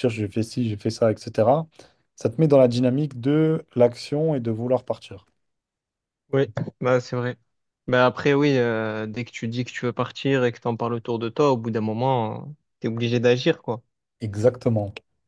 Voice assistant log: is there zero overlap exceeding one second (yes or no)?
yes